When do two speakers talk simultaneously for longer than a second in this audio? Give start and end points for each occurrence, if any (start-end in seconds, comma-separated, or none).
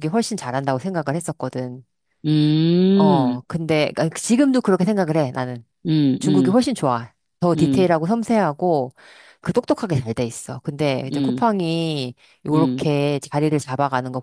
none